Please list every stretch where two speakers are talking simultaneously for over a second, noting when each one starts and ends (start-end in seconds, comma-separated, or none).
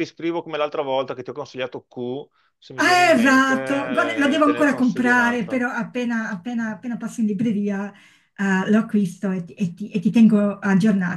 2.7-5.6